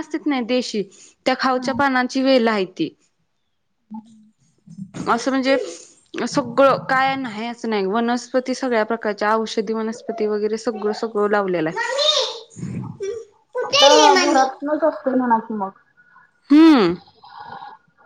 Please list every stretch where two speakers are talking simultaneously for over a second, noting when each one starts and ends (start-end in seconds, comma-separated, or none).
none